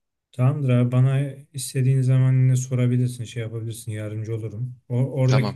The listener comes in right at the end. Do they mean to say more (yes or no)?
no